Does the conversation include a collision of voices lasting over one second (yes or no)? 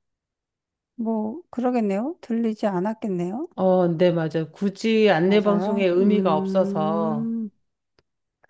yes